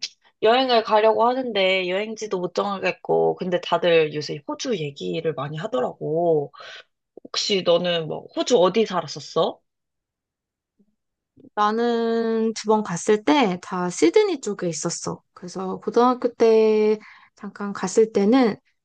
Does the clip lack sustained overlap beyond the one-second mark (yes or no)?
yes